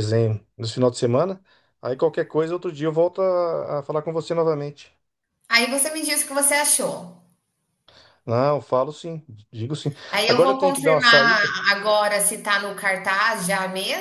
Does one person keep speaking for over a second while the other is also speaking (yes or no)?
yes